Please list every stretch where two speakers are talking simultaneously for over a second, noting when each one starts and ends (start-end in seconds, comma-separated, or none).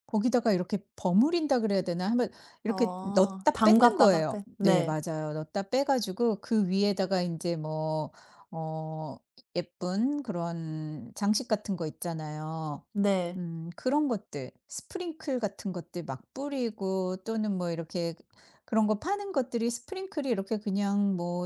2.6-5.0